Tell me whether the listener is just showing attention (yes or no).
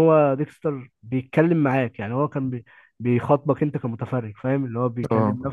yes